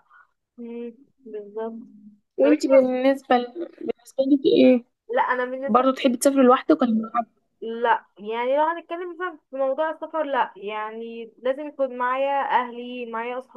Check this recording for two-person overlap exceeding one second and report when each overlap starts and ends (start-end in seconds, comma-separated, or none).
none